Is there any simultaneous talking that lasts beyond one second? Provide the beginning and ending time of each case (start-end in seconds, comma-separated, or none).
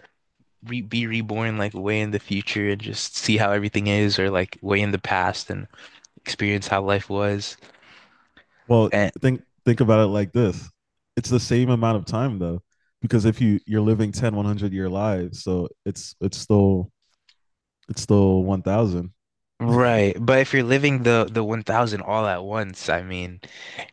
none